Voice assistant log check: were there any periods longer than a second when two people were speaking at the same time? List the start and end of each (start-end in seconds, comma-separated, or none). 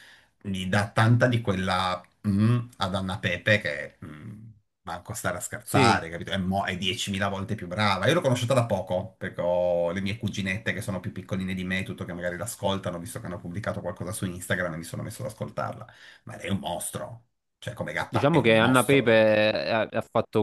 18.1-19.3